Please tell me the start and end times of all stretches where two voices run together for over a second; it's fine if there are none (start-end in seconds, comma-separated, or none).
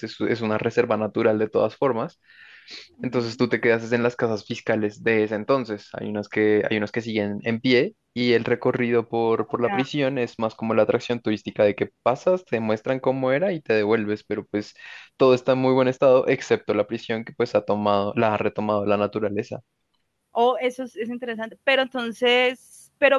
none